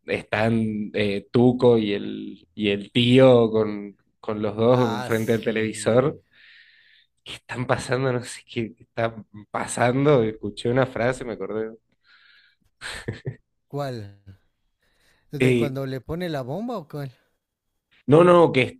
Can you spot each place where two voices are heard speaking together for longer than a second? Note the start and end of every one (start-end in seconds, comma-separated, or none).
4.7-6.2